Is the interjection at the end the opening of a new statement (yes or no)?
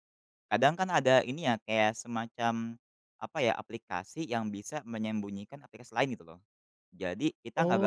yes